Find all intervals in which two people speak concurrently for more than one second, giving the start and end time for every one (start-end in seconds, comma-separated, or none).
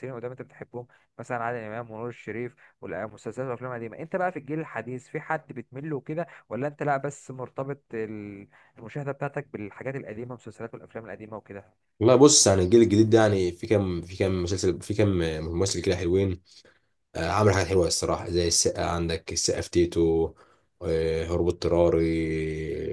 none